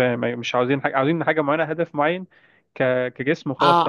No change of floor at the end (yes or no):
no